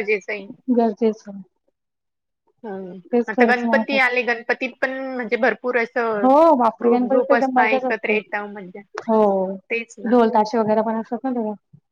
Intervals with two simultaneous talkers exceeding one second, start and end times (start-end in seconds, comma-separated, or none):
6.2-8.2